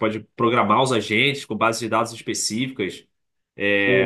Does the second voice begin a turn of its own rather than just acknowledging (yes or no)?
no